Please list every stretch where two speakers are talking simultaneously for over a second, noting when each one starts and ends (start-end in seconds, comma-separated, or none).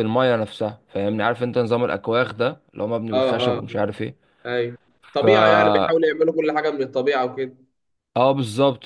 none